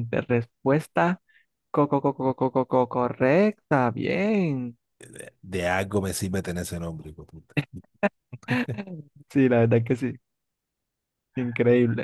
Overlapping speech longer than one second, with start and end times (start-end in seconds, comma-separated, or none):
none